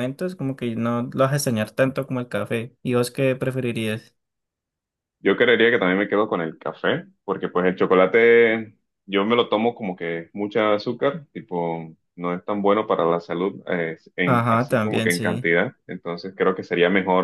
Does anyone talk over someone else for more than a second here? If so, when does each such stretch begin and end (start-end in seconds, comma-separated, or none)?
14.2-15.5